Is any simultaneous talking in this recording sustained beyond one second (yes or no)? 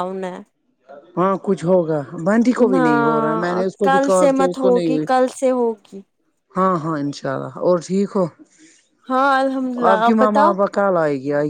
yes